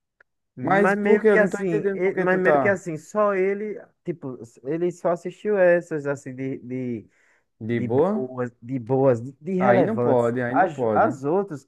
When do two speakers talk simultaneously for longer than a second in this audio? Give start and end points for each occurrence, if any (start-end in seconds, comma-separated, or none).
0.6-2.8, 9.6-11.2